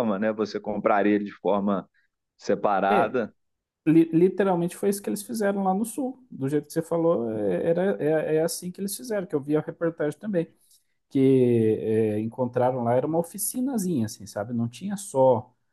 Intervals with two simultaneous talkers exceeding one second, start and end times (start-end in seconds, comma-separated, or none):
none